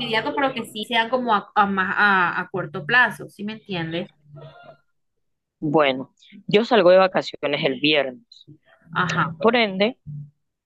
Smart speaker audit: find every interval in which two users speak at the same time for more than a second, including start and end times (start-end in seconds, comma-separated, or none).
none